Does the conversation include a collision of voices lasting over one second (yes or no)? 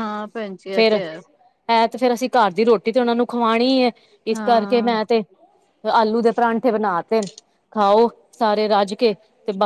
no